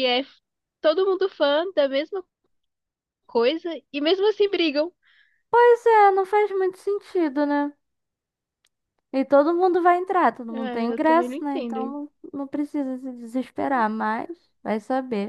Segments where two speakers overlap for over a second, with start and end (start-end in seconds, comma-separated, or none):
10.5-12.0